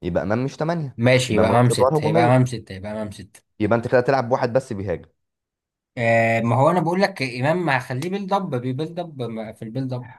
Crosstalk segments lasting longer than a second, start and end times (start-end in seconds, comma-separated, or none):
1.0-2.5